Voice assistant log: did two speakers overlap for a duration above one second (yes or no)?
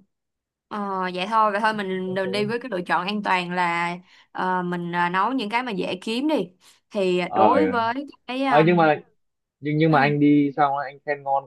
no